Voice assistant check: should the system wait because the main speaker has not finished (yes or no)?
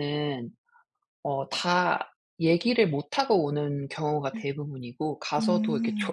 yes